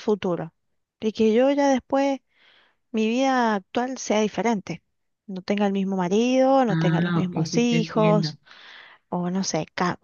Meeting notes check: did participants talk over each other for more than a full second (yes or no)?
yes